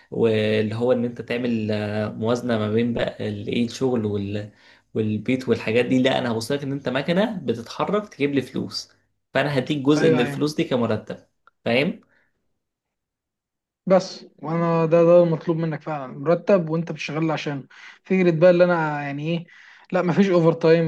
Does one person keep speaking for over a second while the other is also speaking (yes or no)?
no